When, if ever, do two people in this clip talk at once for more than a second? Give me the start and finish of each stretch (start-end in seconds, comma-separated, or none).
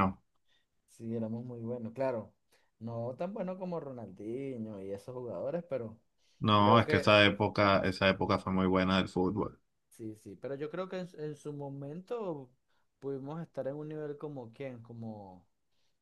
none